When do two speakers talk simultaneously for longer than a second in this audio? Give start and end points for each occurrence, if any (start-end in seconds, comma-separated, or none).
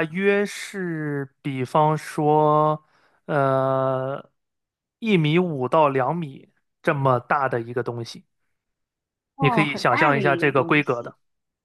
9.4-11.1